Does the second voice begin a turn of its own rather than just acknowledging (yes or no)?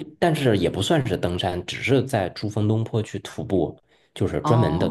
no